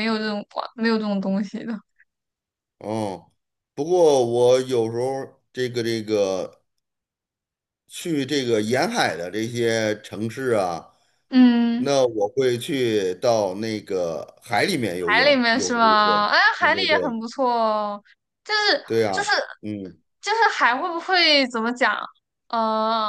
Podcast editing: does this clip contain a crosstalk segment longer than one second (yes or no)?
yes